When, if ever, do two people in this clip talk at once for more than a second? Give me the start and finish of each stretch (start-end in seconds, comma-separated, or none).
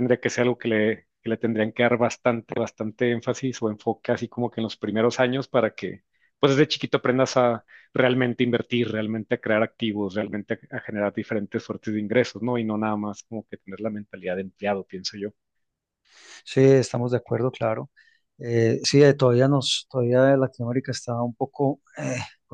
none